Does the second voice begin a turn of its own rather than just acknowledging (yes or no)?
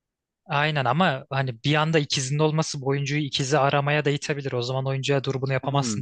yes